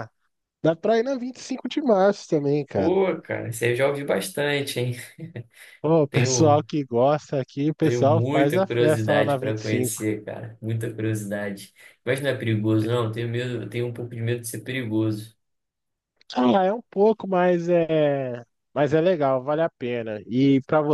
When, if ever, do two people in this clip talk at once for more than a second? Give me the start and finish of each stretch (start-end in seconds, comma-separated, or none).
7.8-10.0